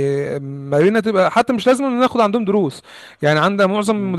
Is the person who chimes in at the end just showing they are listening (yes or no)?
yes